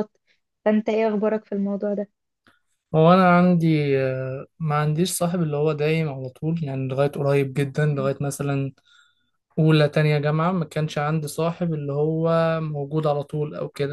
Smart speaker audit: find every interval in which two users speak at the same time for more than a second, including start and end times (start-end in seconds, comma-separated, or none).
none